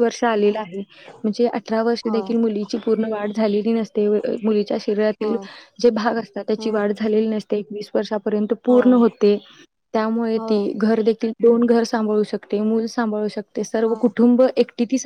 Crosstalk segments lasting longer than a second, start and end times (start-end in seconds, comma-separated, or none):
none